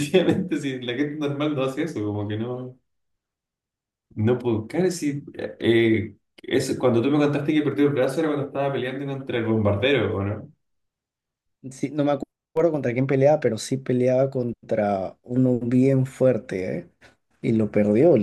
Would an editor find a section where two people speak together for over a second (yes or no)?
no